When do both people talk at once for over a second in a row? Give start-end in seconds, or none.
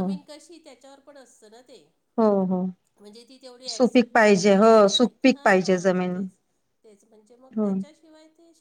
3.7-6.1